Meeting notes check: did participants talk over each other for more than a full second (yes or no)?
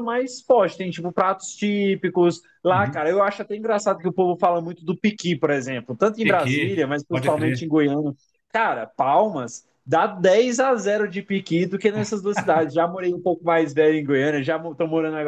yes